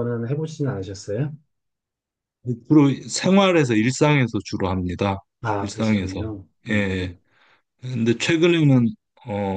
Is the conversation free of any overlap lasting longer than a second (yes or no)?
no